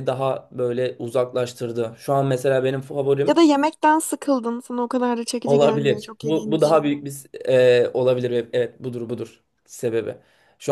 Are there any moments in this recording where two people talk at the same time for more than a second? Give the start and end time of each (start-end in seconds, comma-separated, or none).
5.5-6.9